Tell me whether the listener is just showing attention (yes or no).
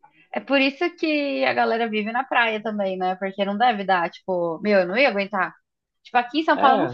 yes